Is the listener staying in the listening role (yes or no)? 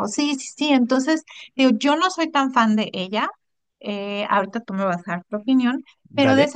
yes